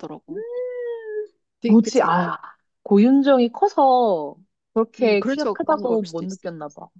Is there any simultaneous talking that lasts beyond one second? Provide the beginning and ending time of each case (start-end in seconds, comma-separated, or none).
5.0-6.5